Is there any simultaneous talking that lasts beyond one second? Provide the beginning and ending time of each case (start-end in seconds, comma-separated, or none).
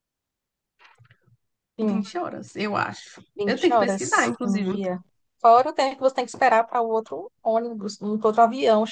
3.4-4.8